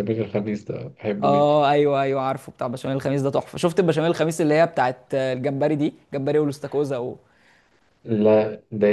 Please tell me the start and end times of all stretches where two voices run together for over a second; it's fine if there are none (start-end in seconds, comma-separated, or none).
none